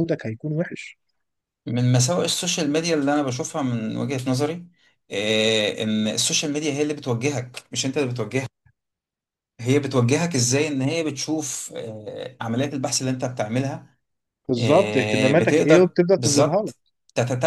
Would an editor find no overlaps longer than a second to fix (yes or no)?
no